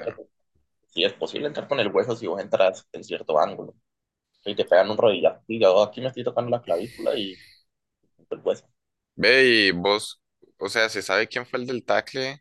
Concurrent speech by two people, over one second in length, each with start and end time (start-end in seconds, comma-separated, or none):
none